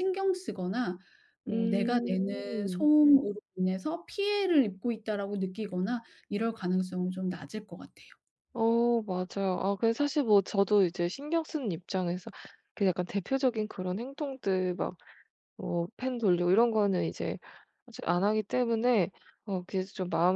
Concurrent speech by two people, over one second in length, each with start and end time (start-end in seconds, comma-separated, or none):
1.5-2.9